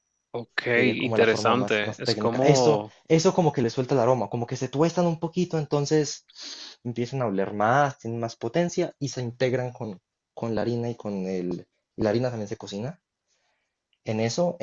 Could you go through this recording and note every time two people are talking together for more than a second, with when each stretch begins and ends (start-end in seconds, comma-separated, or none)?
0.7-2.9